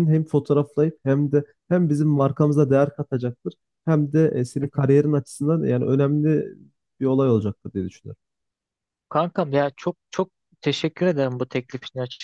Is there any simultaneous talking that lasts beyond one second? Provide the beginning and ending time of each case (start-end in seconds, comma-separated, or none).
none